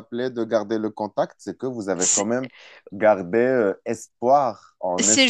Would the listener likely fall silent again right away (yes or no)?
no